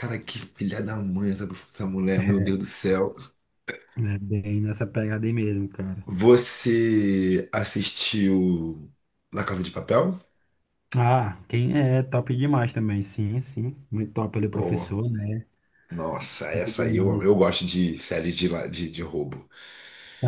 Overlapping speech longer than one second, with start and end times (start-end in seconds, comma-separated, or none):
none